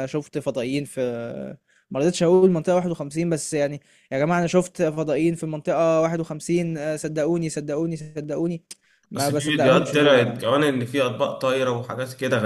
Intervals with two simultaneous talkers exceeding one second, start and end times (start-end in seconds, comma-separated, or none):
9.2-10.5